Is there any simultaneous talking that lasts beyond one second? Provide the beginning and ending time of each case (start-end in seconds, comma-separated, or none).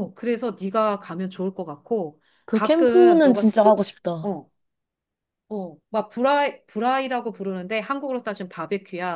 2.5-4.3